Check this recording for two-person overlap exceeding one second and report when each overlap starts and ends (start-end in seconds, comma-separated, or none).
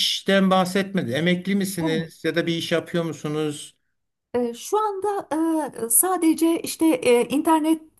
none